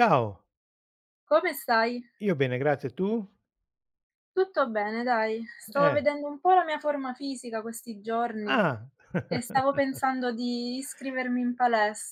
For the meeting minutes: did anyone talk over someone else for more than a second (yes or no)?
no